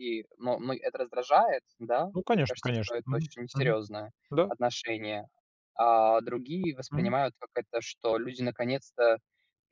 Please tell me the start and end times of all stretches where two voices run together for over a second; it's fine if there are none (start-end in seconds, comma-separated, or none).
2.1-3.8